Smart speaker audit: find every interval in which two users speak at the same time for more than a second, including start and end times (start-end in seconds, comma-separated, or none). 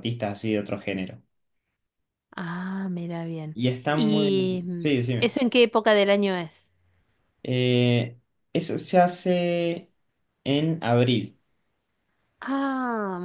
3.5-5.4